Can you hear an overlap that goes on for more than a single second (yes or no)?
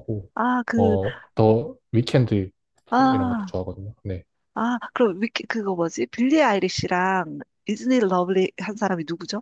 no